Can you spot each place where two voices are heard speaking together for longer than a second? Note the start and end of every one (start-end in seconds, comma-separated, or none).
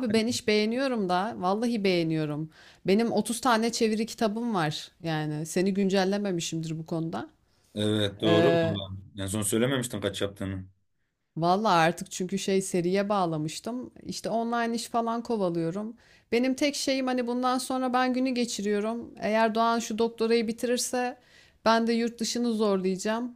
none